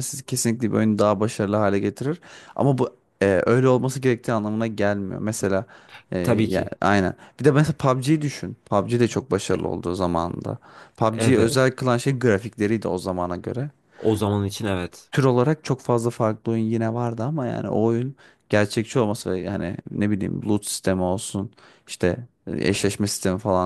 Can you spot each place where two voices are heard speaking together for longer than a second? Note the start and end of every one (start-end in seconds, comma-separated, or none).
none